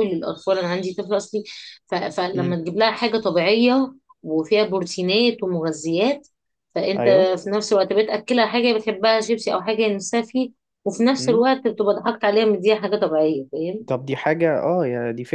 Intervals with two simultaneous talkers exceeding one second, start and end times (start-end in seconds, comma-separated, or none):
none